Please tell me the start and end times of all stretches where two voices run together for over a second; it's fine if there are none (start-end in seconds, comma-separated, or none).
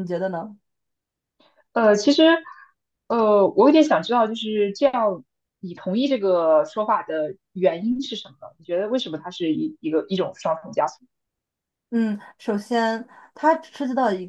none